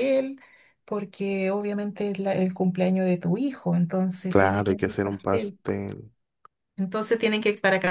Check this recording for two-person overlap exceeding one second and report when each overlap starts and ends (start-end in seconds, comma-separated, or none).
4.3-5.6